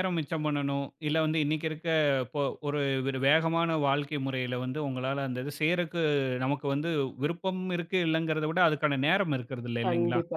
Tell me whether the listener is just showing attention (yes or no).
no